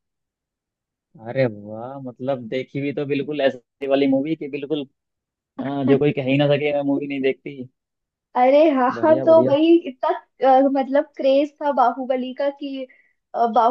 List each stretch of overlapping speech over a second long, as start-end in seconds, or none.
none